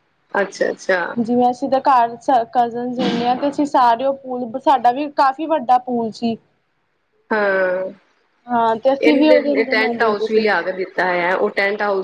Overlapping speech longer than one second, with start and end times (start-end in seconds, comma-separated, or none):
9.1-10.4